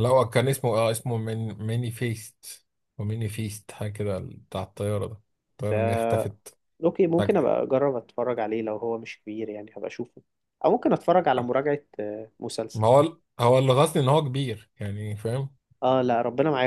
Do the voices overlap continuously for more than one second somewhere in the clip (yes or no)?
no